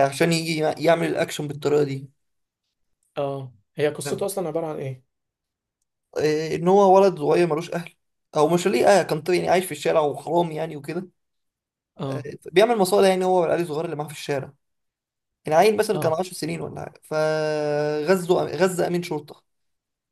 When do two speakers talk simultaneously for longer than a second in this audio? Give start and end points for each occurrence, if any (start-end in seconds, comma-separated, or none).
none